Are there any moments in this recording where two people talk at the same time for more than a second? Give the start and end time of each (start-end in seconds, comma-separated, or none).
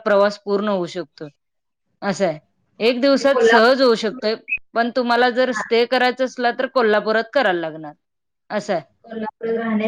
2.9-4.2